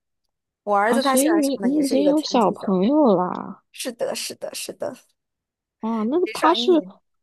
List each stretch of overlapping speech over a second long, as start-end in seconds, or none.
0.9-2.8